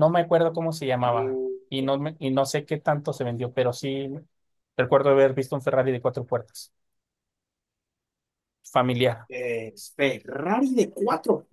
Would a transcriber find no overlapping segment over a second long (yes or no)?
yes